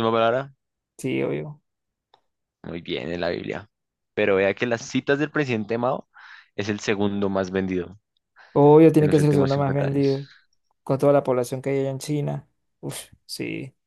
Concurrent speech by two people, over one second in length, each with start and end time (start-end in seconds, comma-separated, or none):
9.0-10.2